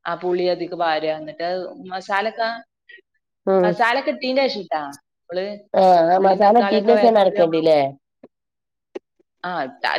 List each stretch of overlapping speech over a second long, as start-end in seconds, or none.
6.2-7.6